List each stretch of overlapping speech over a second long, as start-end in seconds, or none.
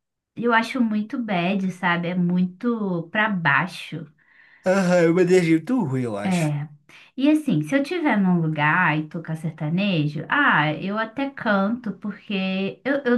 none